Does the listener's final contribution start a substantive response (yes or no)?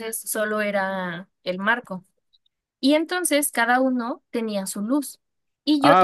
yes